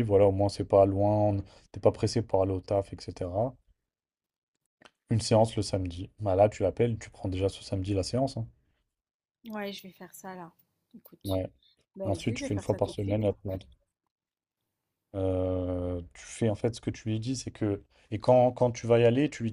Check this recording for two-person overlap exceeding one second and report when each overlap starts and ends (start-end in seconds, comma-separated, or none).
12.0-13.5